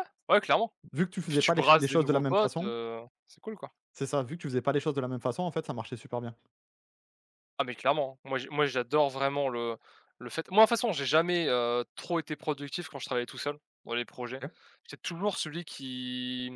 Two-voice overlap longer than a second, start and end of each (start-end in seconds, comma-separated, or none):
1.2-2.7